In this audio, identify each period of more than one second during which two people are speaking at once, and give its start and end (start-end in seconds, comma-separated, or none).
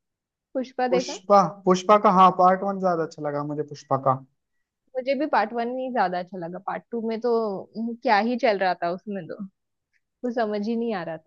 none